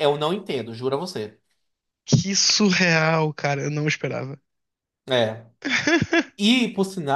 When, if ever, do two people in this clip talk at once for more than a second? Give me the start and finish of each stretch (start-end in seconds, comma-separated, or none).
none